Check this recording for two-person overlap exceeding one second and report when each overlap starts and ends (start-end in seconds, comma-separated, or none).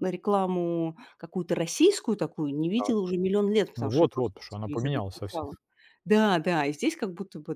3.8-5.5